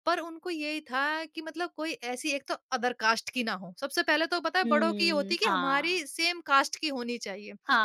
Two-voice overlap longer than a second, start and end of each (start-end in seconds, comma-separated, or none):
4.6-6.0